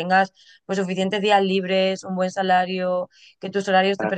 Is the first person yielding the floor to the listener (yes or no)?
no